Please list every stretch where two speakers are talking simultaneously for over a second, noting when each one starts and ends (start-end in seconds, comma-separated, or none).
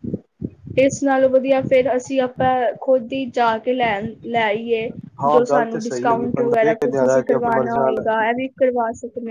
5.3-8.0